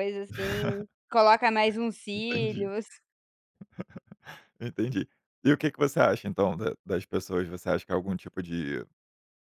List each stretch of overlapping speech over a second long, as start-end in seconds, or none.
none